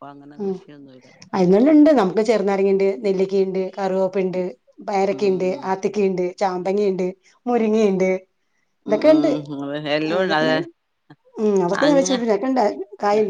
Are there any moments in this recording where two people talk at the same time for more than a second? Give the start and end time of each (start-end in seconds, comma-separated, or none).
none